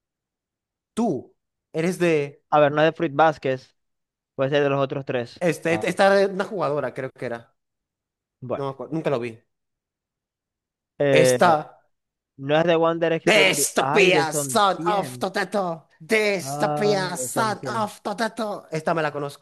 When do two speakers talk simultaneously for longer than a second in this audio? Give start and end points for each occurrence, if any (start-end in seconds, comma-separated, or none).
13.3-15.3, 16.4-17.9